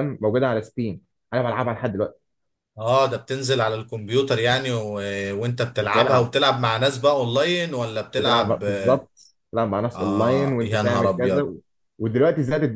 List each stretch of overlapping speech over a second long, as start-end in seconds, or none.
9.9-11.5